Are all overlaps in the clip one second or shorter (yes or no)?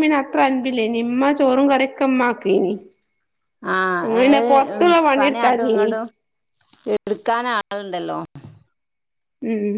no